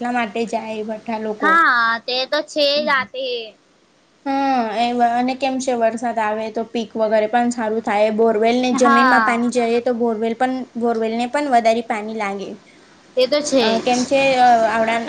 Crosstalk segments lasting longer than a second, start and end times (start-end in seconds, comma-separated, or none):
none